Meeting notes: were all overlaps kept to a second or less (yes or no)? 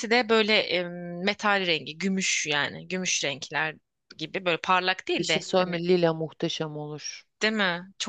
yes